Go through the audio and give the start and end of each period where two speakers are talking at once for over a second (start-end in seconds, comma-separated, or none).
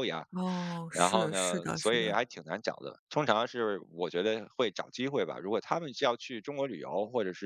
0.9-2.2